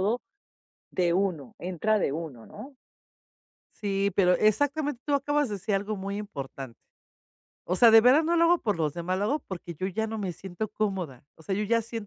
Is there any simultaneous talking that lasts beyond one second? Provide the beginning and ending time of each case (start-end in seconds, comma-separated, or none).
none